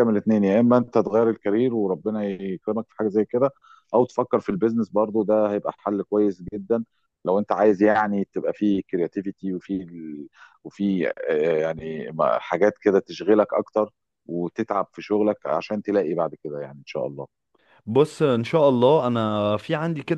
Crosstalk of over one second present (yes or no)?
no